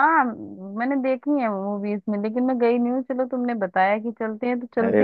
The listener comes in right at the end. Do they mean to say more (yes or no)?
yes